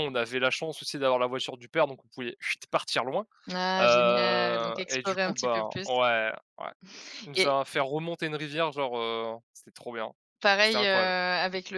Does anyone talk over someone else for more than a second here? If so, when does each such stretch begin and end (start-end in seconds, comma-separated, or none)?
3.8-5.9